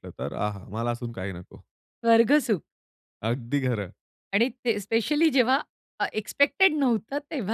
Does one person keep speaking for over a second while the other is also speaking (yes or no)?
no